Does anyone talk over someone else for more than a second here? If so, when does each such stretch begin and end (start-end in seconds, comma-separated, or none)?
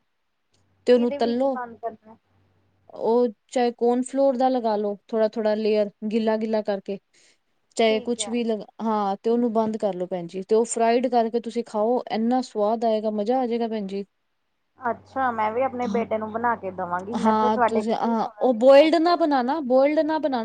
17.2-19.4